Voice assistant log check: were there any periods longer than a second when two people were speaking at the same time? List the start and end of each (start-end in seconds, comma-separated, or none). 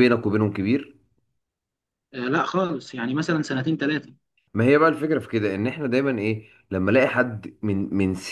none